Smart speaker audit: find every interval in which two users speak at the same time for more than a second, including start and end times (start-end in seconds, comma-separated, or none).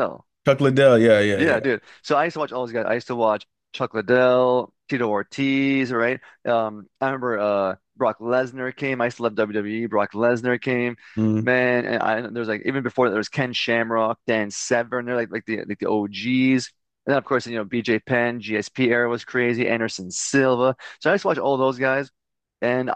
none